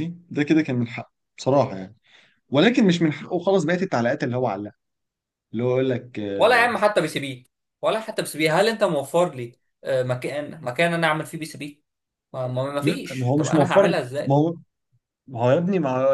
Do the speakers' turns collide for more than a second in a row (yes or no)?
yes